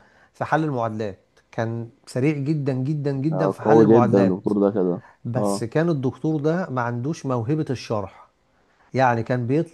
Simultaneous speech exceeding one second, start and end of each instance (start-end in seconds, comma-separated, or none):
3.3-4.5